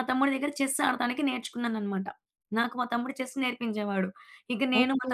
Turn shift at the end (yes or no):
no